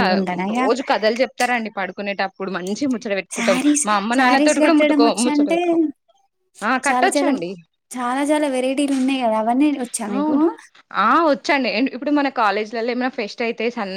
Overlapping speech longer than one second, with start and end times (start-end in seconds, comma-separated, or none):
3.3-5.6